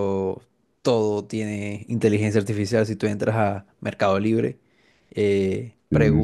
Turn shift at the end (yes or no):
no